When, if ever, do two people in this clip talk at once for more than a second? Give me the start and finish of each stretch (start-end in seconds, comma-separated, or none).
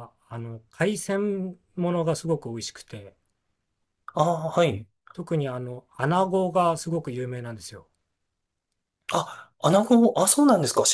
none